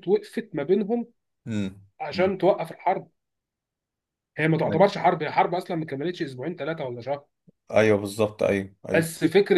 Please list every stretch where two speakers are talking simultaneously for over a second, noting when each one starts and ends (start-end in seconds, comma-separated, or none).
none